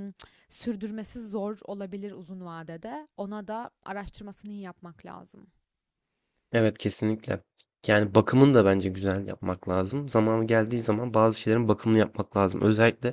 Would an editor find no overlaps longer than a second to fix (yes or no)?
yes